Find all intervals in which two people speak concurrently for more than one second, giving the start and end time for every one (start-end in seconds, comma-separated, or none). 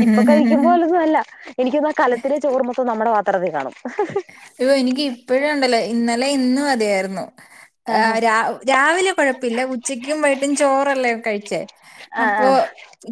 none